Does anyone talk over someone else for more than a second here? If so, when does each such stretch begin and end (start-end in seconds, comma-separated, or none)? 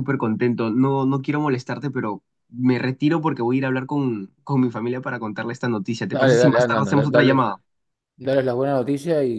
6.1-7.5